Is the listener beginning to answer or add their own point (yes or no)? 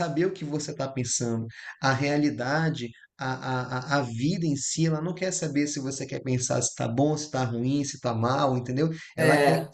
no